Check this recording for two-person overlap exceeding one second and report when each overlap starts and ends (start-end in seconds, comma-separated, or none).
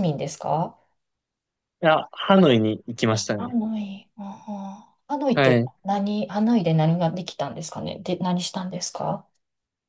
none